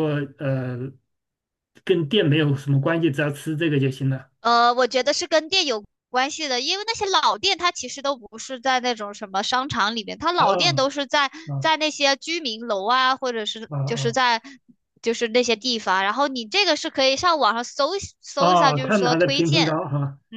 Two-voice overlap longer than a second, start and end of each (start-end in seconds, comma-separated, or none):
18.4-19.8